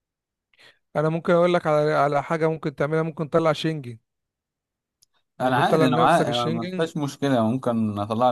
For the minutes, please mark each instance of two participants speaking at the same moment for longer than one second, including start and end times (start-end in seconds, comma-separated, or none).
5.4-6.9